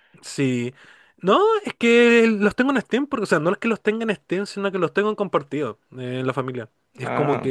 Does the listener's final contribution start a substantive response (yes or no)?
no